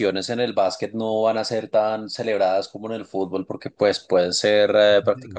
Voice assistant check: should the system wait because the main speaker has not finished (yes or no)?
yes